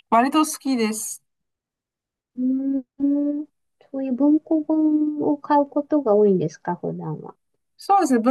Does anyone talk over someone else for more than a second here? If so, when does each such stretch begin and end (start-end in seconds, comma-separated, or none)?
none